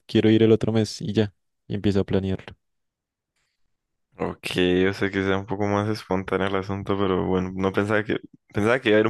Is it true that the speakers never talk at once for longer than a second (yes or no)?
yes